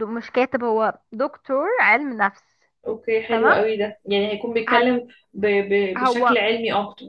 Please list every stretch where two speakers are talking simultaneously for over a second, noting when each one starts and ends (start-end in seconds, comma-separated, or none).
none